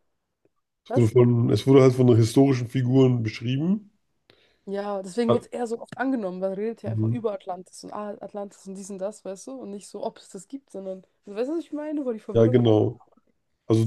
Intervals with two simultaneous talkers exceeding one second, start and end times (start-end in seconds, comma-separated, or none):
none